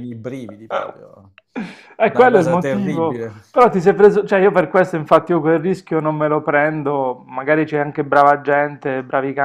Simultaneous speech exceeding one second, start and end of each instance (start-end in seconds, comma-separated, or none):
2.1-3.4